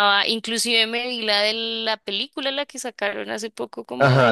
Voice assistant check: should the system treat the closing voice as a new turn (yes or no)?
yes